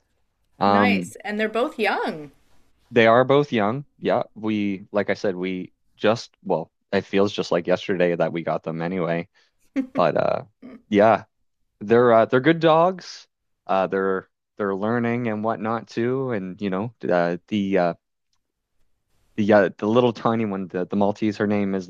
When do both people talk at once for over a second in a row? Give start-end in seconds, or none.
none